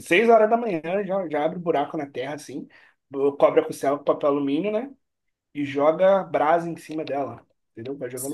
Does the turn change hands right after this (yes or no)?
yes